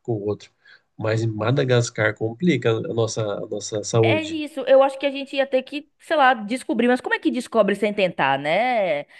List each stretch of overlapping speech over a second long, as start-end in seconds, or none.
none